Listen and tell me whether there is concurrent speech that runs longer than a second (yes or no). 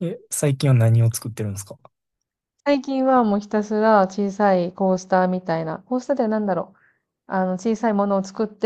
no